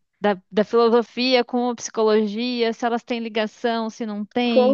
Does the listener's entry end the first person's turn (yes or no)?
yes